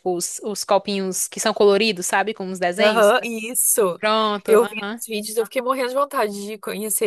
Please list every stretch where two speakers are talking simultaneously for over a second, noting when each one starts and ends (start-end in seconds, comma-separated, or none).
none